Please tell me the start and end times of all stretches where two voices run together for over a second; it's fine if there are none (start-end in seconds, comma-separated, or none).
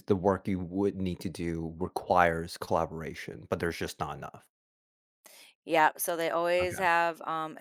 none